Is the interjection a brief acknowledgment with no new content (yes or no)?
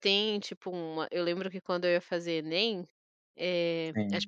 yes